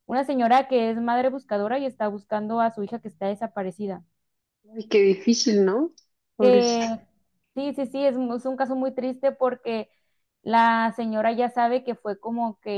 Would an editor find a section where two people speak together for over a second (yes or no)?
no